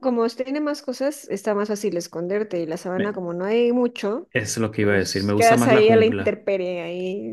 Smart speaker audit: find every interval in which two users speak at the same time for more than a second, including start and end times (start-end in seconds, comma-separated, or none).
4.9-6.4